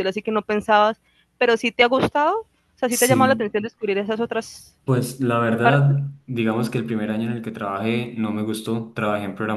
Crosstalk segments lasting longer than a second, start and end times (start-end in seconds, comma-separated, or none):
none